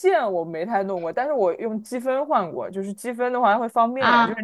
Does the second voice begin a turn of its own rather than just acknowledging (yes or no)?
no